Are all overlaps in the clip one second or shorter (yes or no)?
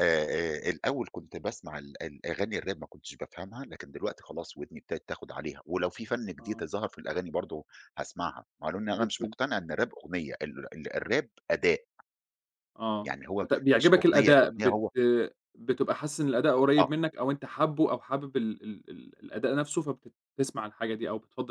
no